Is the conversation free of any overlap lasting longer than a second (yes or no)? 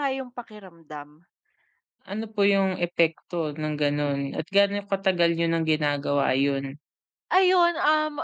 yes